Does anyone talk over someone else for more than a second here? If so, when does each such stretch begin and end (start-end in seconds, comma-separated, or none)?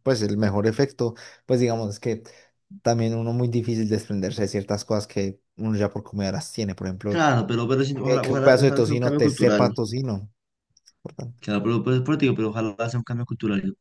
8.0-9.7